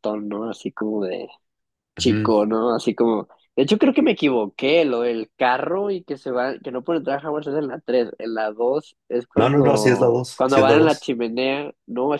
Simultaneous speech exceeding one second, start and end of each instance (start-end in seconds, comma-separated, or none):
9.3-11.1